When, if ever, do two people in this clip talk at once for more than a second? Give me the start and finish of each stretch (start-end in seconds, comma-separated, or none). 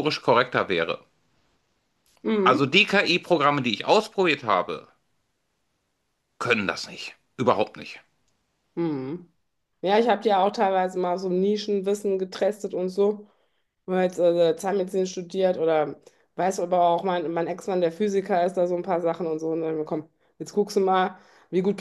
none